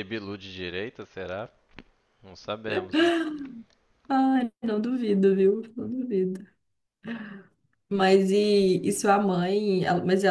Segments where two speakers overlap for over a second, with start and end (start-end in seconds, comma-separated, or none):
none